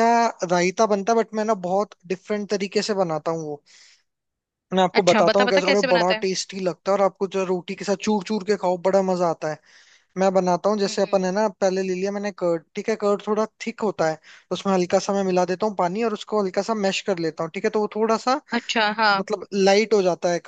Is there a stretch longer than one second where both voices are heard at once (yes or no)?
yes